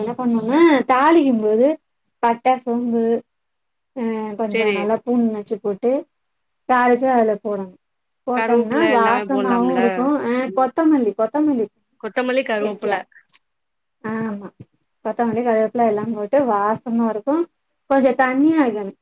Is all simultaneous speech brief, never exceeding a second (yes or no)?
no